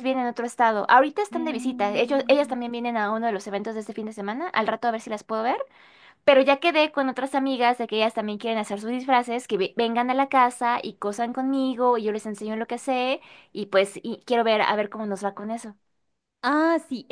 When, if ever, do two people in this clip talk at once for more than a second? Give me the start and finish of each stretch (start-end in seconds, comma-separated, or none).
1.3-2.6